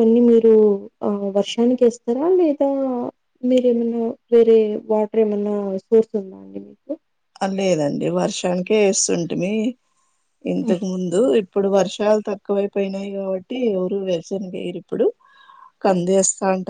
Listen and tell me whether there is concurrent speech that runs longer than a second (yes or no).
no